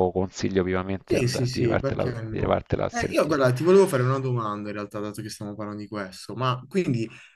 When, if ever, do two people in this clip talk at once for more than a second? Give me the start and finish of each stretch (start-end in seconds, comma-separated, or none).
1.0-3.4